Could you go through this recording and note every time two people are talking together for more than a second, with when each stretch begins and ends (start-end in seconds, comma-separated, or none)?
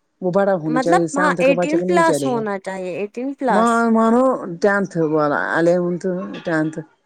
0.8-2.4